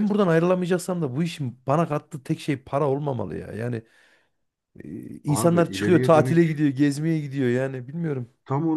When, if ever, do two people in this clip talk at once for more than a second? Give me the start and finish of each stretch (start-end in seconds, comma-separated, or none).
5.3-6.6